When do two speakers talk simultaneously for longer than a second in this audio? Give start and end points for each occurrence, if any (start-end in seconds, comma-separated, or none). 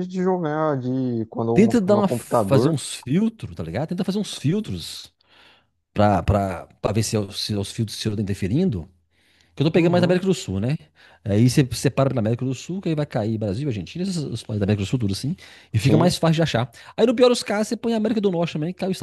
1.5-2.8